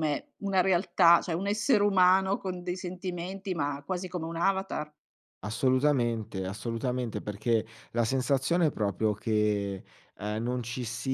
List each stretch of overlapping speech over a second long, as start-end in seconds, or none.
none